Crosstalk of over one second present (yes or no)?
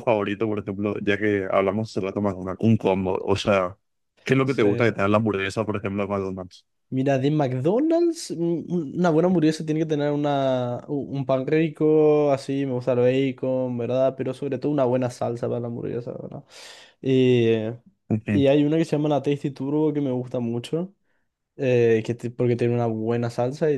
no